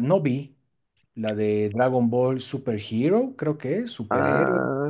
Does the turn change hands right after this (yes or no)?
yes